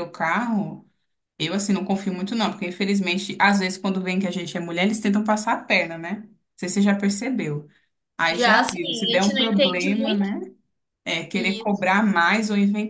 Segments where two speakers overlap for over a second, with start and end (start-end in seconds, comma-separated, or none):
8.3-10.3